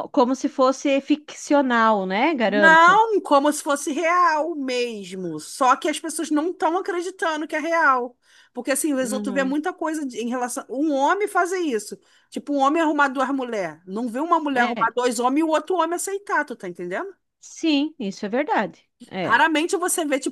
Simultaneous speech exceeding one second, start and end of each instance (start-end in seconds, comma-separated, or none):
none